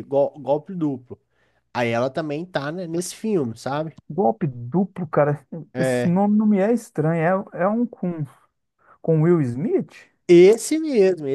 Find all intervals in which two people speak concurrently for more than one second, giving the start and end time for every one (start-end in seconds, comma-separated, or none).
none